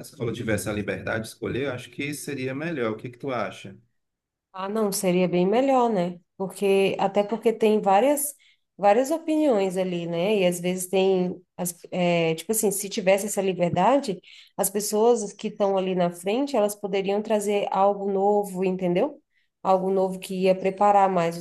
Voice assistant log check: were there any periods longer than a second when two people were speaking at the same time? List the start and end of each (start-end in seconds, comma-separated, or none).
none